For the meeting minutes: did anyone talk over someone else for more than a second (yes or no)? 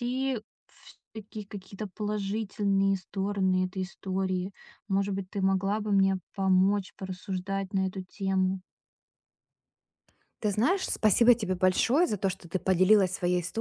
no